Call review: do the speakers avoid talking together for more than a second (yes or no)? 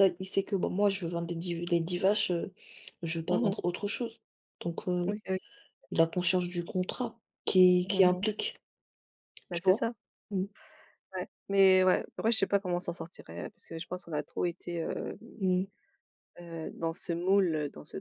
yes